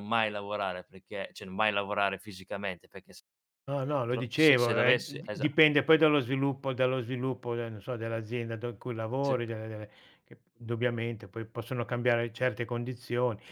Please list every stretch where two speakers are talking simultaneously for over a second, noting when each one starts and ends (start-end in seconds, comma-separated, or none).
4.1-5.5